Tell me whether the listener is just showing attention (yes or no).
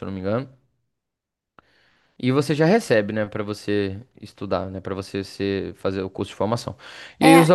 no